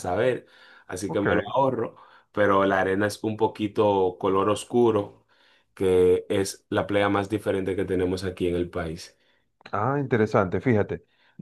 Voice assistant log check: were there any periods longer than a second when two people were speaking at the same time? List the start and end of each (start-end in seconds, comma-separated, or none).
none